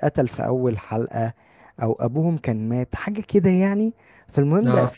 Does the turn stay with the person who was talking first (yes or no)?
yes